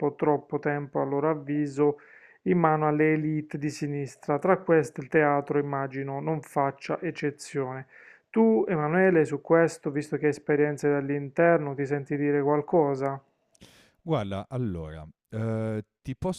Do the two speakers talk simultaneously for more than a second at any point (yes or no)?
no